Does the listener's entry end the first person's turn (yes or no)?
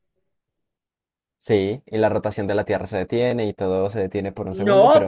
yes